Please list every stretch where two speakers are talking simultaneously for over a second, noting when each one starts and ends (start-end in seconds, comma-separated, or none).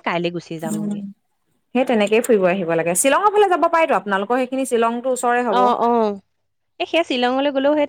none